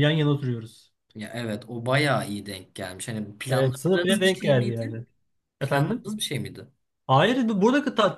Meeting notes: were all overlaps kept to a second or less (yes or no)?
no